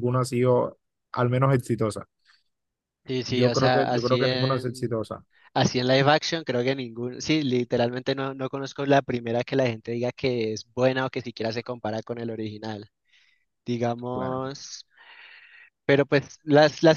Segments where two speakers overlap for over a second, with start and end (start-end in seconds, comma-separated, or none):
3.3-4.9